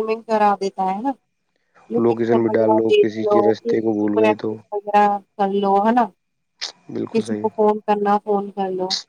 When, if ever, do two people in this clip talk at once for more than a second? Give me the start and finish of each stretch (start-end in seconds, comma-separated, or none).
2.0-4.5